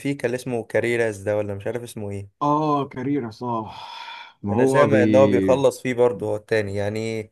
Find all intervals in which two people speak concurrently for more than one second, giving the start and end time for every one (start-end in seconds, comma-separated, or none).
none